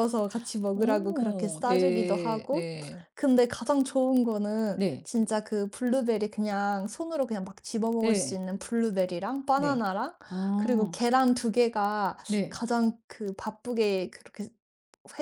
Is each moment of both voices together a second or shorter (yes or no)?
no